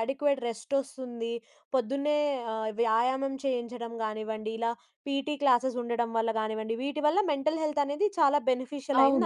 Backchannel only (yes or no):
no